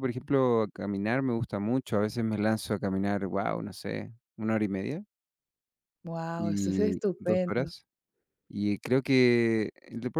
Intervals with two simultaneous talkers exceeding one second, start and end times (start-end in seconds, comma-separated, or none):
6.4-7.7